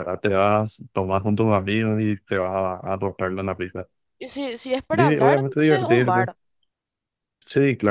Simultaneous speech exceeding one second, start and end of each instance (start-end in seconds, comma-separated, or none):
4.9-6.3